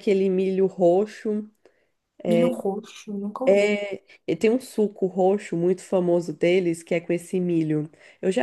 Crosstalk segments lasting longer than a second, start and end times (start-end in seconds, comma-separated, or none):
none